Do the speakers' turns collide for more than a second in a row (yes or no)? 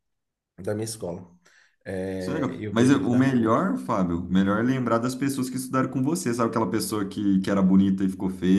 yes